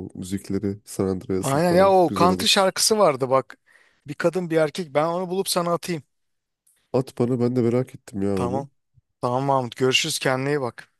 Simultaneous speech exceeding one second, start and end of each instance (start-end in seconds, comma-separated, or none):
1.4-2.7